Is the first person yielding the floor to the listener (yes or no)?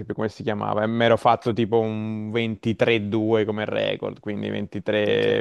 no